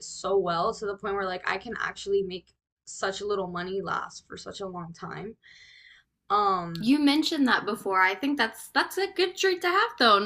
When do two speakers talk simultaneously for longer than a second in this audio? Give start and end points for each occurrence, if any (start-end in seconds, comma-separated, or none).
none